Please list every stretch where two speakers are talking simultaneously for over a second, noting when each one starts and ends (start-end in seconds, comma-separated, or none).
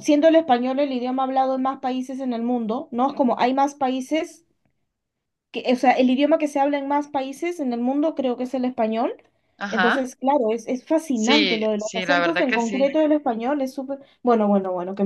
11.1-13.0